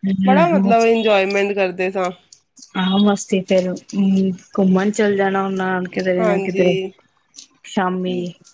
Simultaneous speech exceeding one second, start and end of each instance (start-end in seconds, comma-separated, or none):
none